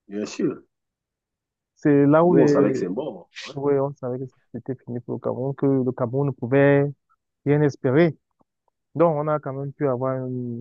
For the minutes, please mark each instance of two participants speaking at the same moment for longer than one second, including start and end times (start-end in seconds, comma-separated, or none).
none